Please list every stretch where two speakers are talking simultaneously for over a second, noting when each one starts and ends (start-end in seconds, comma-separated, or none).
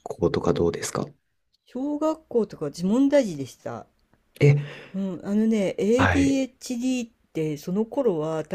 none